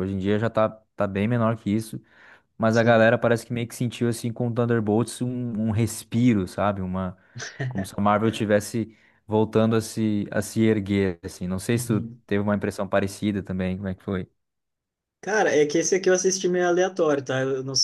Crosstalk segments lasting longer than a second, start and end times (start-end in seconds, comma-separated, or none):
none